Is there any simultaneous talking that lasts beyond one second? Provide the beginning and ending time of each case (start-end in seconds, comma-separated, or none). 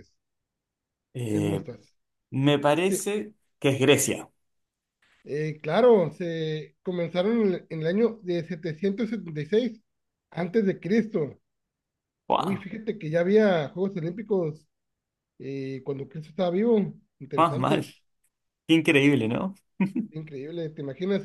none